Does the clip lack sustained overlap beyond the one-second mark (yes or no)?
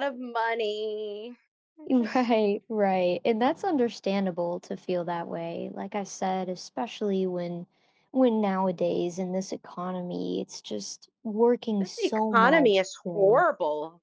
no